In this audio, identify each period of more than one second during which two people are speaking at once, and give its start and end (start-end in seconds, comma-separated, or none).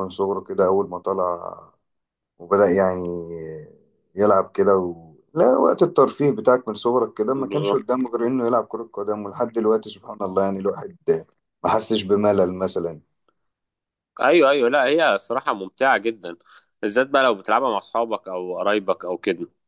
none